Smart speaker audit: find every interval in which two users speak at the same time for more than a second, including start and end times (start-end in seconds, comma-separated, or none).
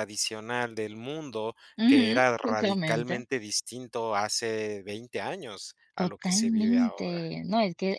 1.8-3.2, 6.0-7.2